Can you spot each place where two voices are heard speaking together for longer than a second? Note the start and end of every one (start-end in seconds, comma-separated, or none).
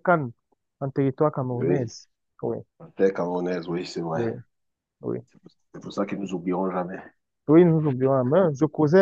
none